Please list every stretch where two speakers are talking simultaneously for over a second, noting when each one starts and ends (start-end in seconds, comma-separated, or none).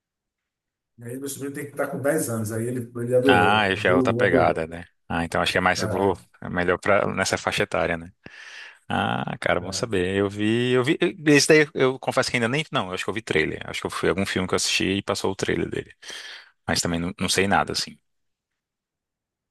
3.3-4.7